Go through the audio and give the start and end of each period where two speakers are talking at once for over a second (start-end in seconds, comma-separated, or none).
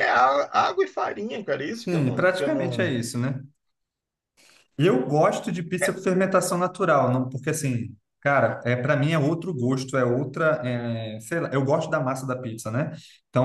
1.7-3.0